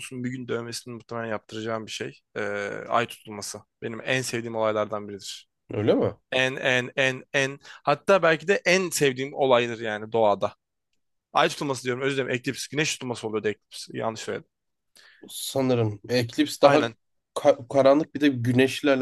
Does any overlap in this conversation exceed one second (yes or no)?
no